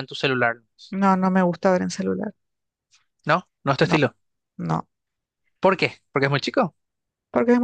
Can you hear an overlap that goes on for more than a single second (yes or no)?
no